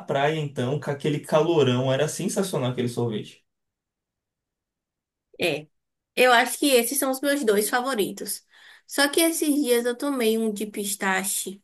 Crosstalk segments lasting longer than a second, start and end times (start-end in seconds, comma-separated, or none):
none